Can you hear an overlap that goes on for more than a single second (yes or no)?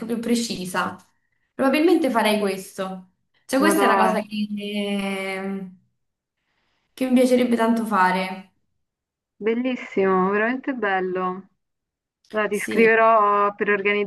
no